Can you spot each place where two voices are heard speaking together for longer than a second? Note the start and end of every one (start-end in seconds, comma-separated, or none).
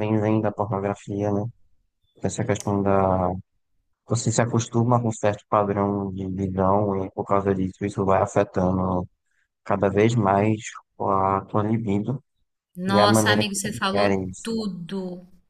12.9-14.6